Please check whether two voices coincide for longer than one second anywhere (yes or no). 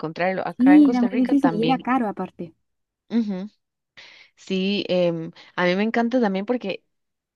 yes